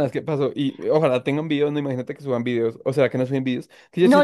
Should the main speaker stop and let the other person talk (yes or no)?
yes